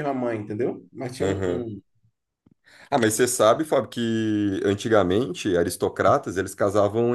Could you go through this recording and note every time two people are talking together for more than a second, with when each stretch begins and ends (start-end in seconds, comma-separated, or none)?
none